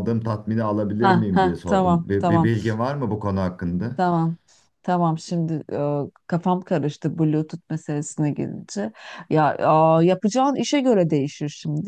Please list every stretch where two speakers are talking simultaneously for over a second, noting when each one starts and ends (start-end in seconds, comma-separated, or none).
1.0-2.5